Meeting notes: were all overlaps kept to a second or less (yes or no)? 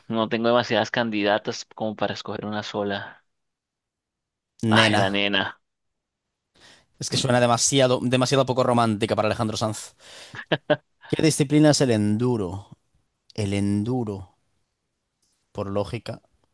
yes